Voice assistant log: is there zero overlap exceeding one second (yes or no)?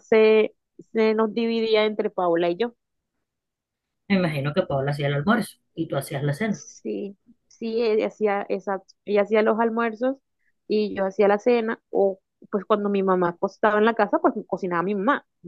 yes